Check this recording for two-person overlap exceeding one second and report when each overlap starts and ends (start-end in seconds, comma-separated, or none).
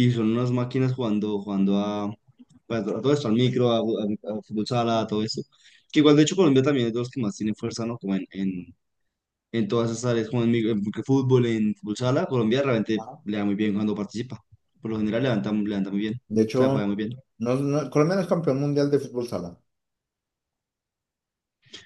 none